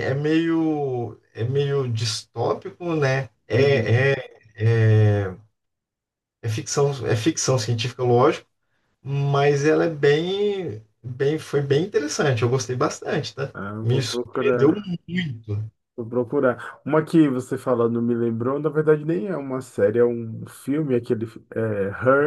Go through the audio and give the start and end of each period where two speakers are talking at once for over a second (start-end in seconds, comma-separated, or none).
13.5-14.9